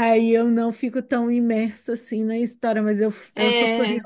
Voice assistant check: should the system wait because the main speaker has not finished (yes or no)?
yes